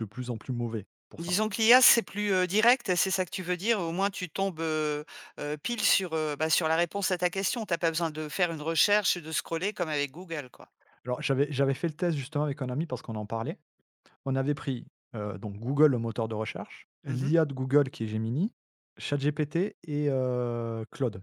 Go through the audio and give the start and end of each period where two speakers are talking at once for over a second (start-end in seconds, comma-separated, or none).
none